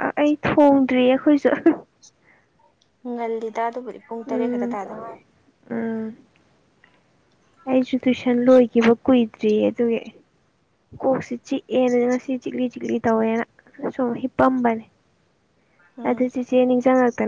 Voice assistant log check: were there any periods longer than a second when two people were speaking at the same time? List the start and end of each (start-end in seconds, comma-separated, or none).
none